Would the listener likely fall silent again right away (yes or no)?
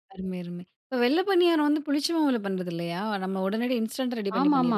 no